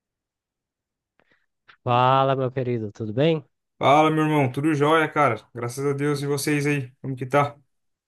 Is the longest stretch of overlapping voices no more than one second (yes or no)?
yes